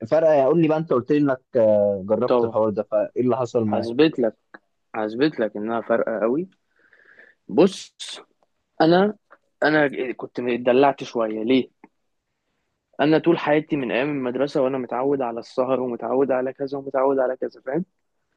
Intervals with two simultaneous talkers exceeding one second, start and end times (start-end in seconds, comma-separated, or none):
none